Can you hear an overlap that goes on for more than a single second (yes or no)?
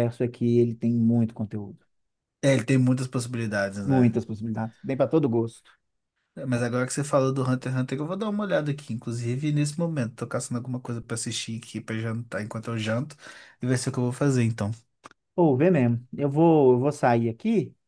no